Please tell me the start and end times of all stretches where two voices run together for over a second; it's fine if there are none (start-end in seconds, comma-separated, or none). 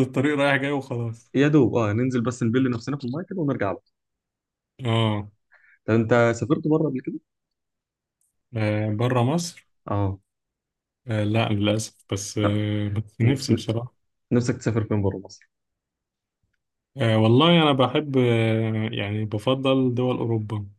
none